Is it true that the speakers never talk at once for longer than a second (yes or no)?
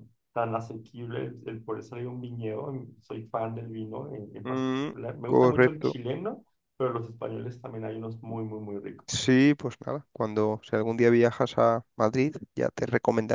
no